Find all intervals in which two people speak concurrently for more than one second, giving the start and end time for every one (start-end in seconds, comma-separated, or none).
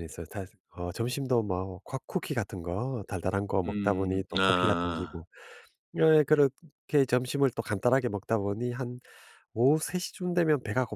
3.7-5.2